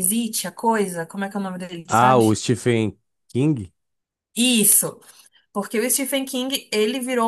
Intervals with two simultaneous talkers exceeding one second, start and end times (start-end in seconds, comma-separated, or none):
none